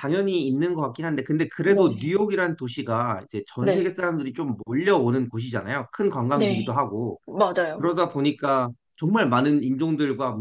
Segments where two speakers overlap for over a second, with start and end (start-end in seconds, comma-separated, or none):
none